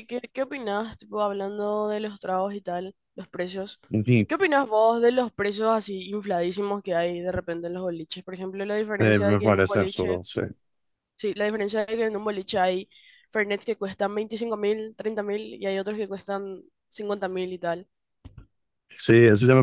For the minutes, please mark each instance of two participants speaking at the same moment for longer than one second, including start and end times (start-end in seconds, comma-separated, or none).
9.0-10.2